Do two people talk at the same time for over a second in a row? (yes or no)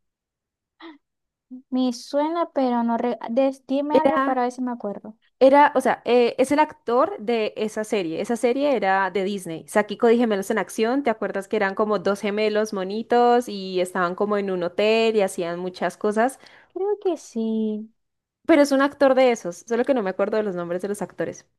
no